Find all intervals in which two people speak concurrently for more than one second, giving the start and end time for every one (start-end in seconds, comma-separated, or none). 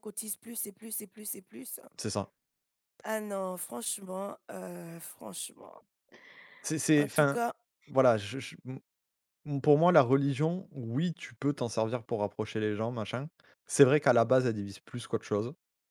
none